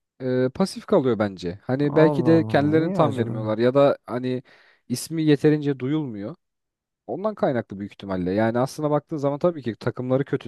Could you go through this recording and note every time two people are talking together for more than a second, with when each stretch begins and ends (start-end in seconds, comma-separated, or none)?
2.0-3.5